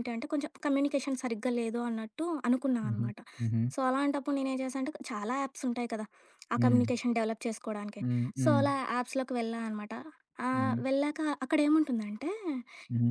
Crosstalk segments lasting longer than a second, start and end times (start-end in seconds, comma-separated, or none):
none